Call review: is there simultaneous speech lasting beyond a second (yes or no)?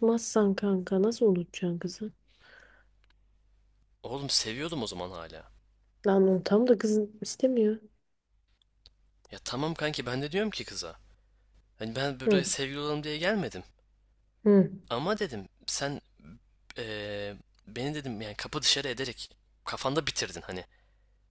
no